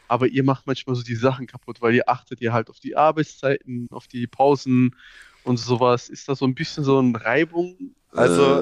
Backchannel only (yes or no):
no